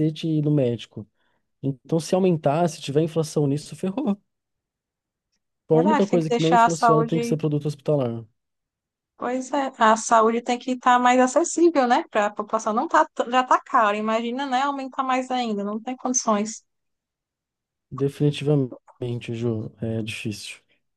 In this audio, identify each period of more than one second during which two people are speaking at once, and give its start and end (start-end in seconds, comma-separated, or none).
5.7-7.4